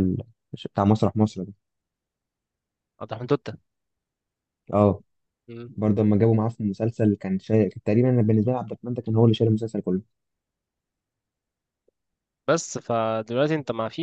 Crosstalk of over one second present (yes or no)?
no